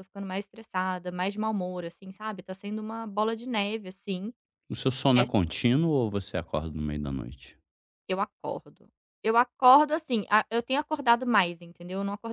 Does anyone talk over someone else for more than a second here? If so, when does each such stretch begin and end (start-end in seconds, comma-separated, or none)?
none